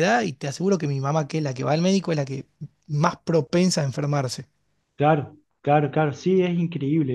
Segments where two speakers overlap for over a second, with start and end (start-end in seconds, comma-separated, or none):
none